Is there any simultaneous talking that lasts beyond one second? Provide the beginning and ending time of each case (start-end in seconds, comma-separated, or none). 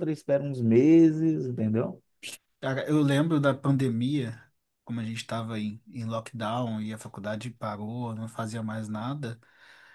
none